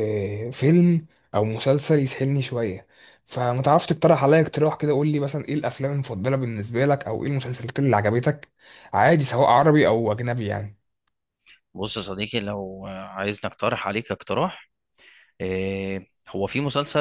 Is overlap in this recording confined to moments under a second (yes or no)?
yes